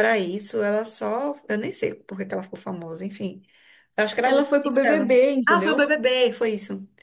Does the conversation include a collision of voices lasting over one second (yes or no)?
yes